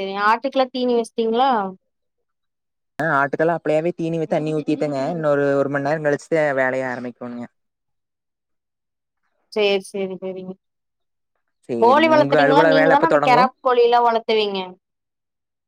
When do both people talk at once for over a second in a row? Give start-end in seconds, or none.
11.8-13.4